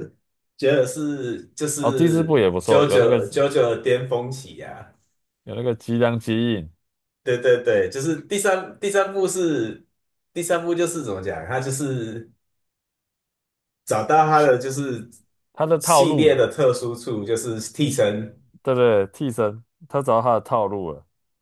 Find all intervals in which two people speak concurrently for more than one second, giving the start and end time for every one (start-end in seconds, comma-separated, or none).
1.8-3.2